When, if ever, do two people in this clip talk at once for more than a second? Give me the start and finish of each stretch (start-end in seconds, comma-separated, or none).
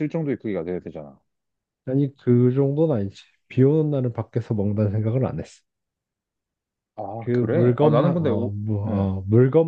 7.2-9.1